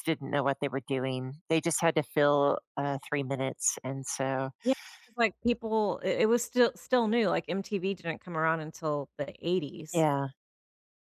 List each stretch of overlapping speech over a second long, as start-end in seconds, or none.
none